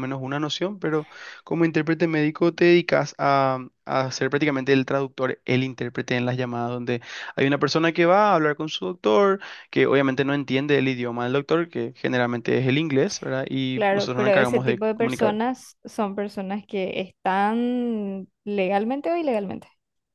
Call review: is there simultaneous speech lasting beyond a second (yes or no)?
yes